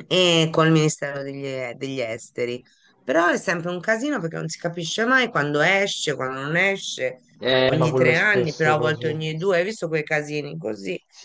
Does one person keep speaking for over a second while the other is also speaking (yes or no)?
yes